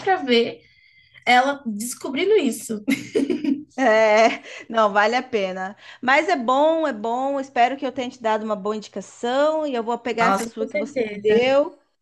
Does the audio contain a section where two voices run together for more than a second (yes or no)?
yes